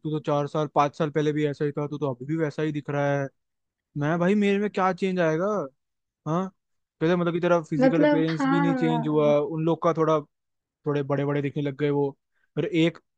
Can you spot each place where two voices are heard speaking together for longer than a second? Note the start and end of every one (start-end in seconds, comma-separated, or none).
7.8-9.3